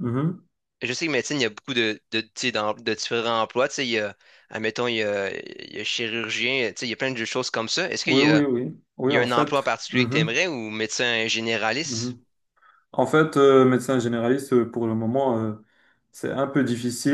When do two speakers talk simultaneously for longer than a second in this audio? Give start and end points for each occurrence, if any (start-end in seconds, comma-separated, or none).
9.1-10.4